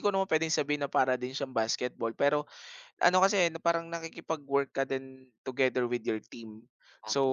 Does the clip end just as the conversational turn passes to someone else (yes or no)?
no